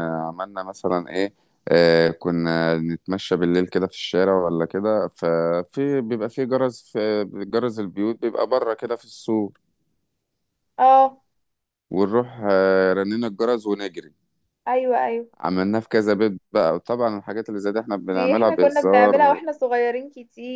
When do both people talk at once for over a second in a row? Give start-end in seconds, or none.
18.1-19.4